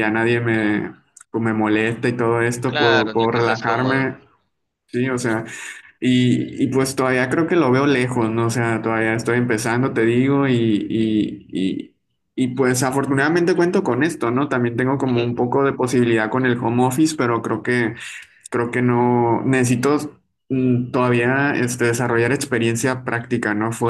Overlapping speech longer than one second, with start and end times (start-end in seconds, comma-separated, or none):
2.7-4.1